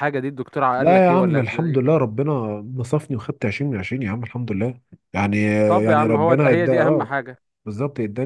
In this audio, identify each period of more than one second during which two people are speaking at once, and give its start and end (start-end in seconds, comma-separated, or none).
5.8-7.1